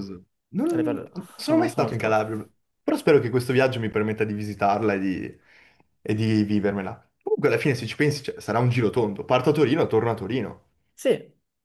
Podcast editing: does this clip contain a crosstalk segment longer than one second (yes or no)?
yes